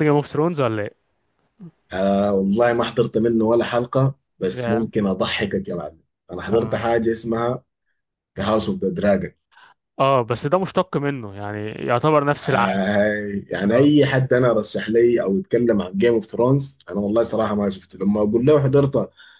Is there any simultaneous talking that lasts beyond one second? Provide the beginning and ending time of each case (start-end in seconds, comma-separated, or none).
none